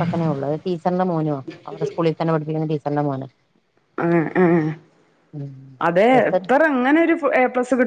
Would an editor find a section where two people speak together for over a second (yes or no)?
no